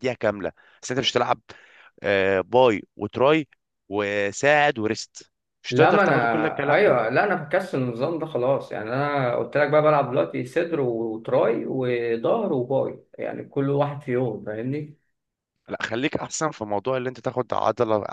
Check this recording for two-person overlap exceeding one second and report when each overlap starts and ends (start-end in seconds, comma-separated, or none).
5.7-7.0